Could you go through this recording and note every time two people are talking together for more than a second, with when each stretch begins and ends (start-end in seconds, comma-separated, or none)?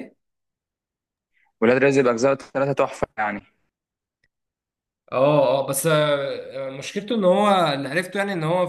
none